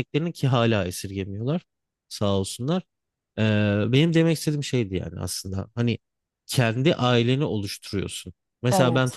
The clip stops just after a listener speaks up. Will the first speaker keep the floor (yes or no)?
yes